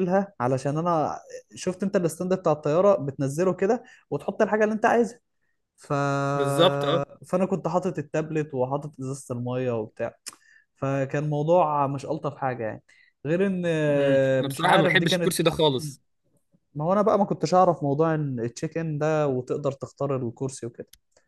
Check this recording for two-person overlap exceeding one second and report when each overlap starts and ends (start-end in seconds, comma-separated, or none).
13.9-15.4